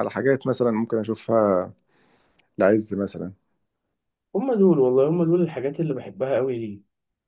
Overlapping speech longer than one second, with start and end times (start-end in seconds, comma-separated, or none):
none